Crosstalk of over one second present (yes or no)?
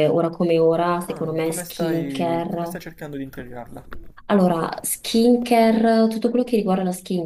yes